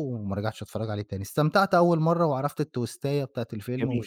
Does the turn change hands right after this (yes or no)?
no